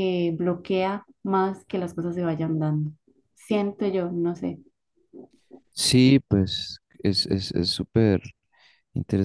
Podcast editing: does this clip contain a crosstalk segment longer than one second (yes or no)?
no